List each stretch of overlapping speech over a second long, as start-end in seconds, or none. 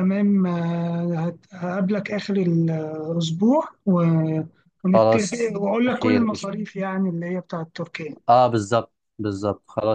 4.9-6.5